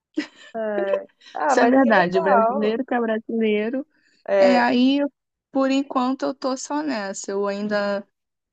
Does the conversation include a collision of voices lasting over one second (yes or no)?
yes